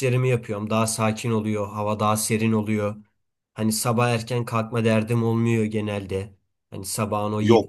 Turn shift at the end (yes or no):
no